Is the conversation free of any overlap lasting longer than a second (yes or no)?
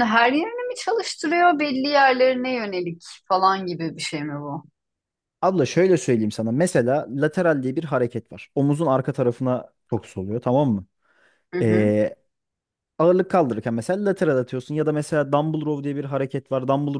yes